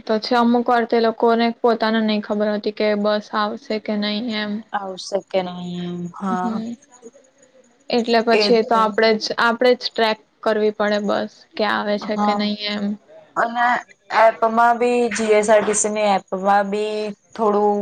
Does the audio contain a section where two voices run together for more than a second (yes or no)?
no